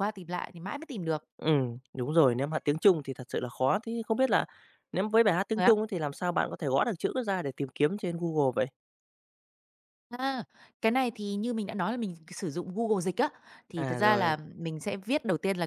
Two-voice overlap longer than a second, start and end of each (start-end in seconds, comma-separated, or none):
none